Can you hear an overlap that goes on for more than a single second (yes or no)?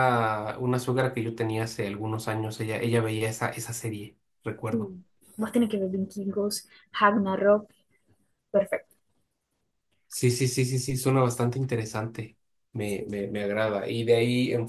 no